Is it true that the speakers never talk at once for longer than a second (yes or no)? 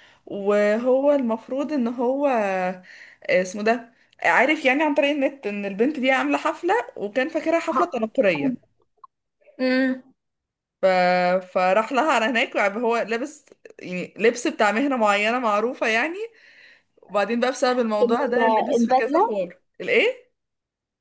no